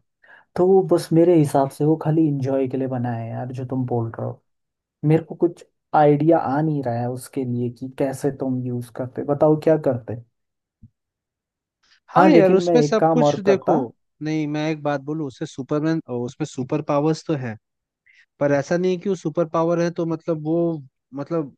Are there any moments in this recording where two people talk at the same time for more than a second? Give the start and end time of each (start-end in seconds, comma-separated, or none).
12.2-13.7